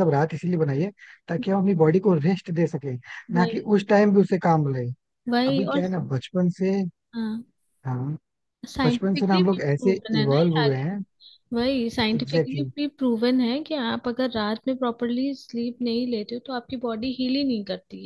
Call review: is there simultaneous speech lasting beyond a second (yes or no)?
yes